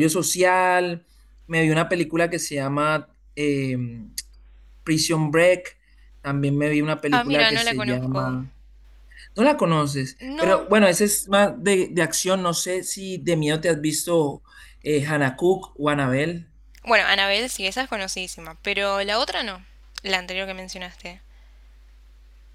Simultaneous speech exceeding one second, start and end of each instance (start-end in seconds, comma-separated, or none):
7.1-8.4